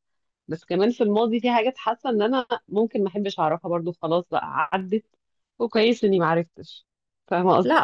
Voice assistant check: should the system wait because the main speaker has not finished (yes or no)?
no